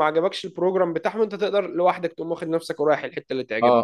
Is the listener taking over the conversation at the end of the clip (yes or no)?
yes